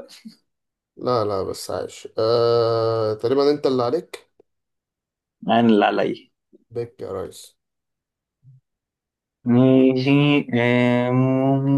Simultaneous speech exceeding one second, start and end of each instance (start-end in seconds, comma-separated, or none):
none